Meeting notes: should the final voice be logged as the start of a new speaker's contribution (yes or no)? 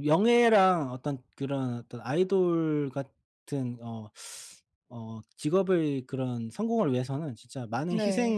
no